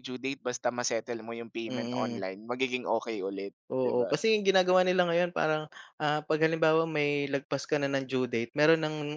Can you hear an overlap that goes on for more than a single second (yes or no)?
no